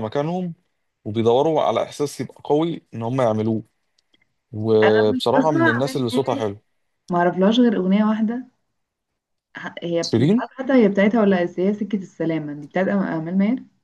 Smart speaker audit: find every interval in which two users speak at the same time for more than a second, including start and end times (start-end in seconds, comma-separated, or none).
4.8-6.4